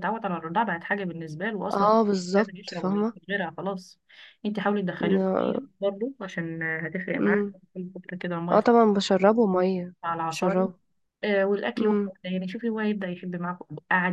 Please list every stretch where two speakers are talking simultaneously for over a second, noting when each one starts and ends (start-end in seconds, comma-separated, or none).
1.7-3.1